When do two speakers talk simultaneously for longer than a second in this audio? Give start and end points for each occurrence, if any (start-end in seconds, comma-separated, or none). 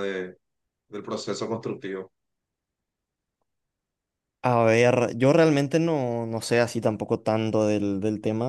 none